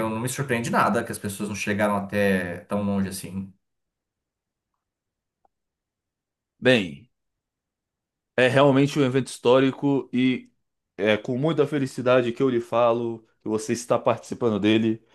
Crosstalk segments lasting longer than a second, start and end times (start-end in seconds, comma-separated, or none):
none